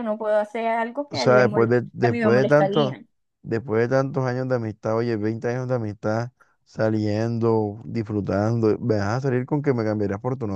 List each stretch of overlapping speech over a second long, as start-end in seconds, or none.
1.1-3.0